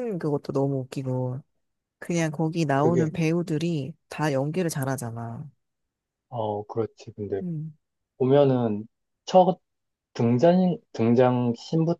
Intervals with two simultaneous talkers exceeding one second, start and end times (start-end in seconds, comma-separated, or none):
none